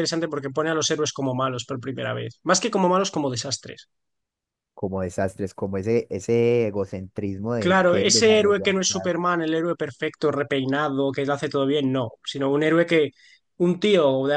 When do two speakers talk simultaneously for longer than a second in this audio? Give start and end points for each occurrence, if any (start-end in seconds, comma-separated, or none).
7.6-9.1